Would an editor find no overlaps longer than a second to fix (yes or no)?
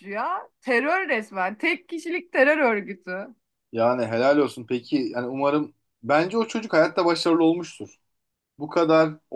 yes